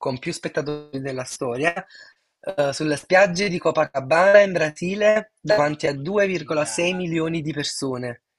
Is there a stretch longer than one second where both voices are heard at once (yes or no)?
yes